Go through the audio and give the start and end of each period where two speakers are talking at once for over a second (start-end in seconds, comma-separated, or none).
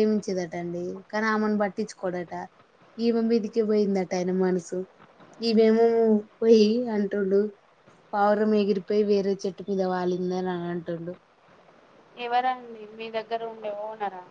none